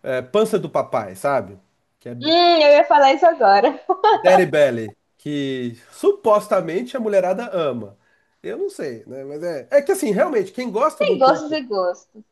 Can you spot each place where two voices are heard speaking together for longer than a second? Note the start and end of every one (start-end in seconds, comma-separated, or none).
none